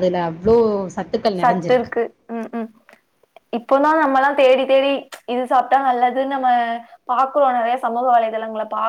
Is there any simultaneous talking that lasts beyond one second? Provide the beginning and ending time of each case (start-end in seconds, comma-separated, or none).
none